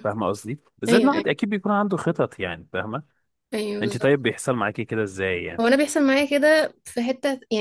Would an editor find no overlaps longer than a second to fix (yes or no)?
yes